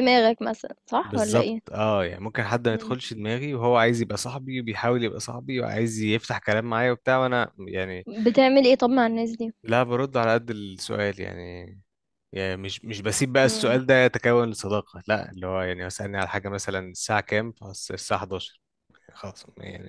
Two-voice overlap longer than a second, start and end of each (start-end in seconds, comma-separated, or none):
none